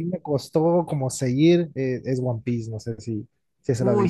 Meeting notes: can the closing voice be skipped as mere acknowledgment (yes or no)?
no